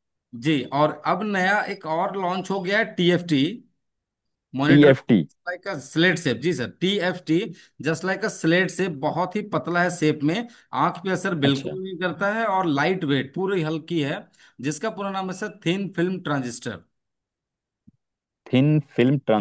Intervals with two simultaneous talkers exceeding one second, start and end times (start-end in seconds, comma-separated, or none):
none